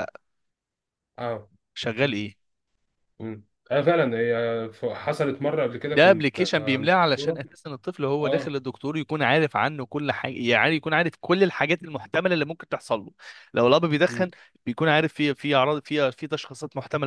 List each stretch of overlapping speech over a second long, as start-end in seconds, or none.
none